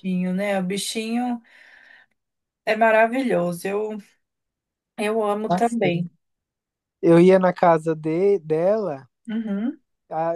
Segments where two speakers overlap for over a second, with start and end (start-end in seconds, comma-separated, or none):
none